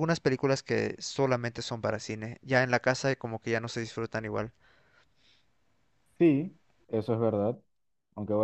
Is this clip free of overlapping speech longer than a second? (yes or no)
yes